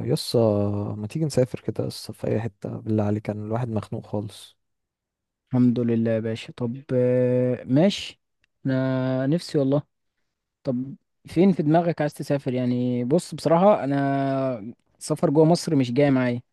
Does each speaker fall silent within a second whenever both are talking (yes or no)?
yes